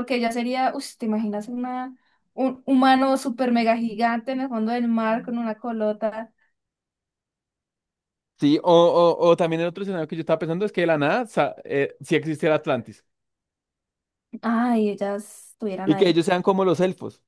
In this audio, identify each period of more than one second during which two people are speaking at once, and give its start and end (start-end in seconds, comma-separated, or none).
none